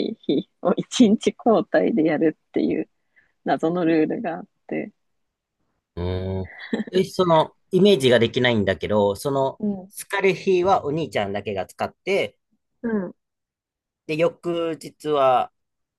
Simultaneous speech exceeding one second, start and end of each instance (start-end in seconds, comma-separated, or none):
none